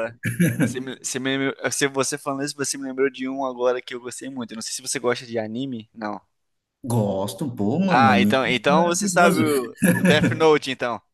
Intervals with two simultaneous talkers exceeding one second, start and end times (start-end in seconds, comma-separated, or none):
7.9-9.4